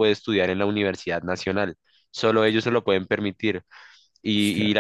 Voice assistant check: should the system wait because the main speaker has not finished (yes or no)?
yes